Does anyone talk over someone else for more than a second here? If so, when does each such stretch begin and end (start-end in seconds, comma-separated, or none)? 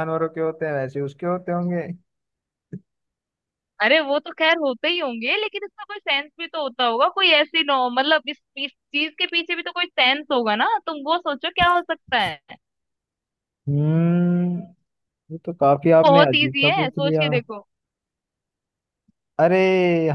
16.0-17.3